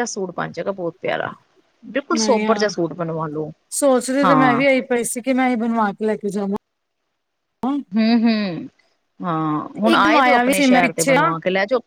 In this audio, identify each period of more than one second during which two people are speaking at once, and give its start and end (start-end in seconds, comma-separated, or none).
9.9-11.3